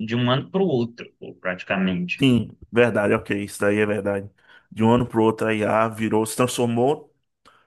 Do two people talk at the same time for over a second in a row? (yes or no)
no